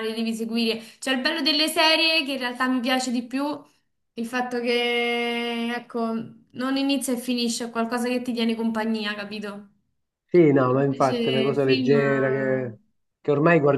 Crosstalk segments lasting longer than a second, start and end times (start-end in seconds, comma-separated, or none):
10.8-12.7